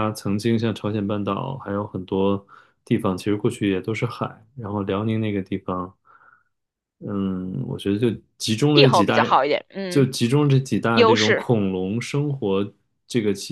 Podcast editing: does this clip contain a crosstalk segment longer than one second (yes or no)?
no